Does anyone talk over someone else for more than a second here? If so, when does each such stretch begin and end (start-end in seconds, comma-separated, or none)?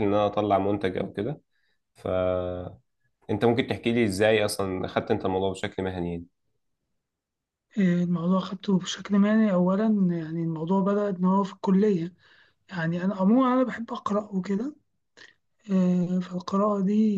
none